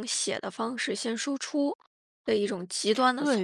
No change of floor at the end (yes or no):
no